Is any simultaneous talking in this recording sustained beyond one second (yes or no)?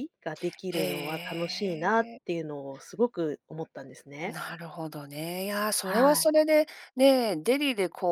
yes